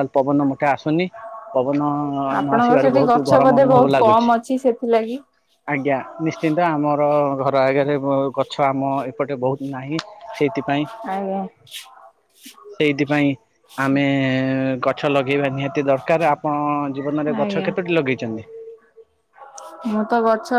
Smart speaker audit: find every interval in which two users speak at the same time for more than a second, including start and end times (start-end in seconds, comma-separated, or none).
2.4-4.3